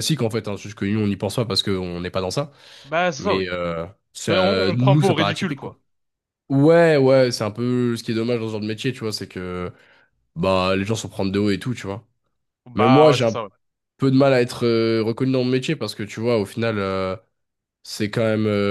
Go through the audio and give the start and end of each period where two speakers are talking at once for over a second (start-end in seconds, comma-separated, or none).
4.3-5.8